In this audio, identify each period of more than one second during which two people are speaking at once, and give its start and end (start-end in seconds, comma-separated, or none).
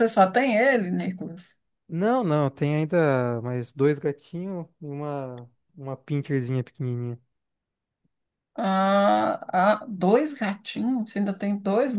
none